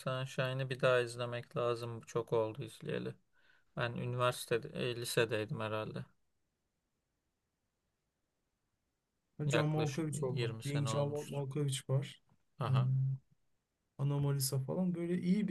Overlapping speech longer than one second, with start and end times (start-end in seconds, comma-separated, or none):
9.5-11.4